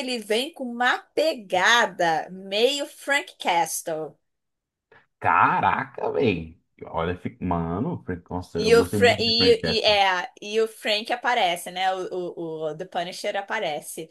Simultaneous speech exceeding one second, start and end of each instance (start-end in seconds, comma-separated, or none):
8.5-9.9